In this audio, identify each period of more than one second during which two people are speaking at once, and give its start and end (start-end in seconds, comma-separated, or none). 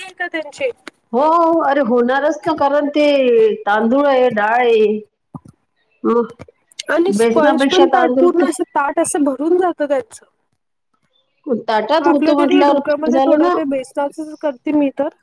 none